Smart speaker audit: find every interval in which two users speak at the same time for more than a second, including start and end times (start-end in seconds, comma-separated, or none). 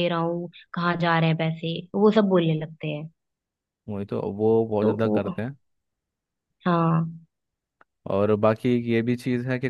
none